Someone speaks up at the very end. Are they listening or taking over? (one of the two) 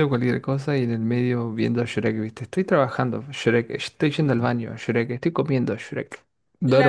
taking over